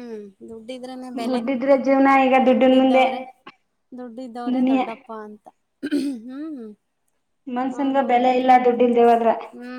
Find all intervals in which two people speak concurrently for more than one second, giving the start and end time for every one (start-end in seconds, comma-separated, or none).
none